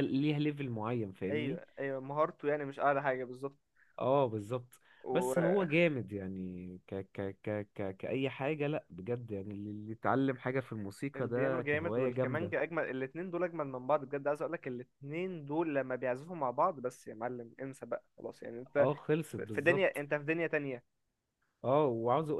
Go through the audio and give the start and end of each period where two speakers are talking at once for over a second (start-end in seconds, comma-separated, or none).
11.2-12.5